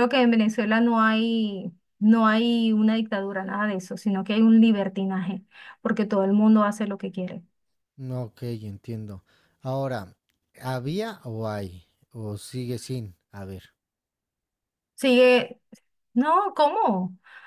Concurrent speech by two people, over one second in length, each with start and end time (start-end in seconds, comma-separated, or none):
none